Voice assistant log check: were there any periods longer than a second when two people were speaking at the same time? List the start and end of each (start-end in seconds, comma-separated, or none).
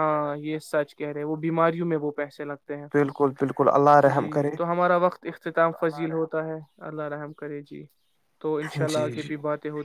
none